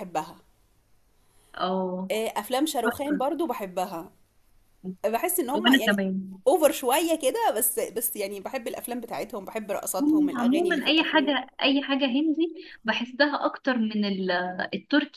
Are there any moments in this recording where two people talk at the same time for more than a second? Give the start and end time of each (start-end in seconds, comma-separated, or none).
10.0-11.3